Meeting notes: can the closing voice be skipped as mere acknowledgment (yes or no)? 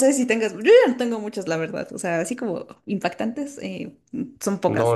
no